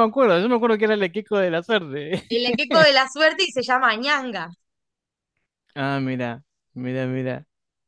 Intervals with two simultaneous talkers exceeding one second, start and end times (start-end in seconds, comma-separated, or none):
none